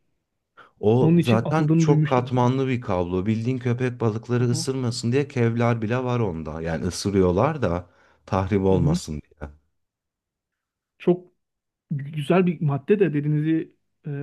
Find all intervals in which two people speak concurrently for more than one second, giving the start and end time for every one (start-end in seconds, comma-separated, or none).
1.0-2.3